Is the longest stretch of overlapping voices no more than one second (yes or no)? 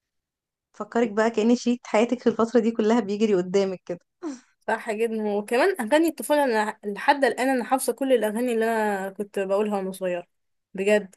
yes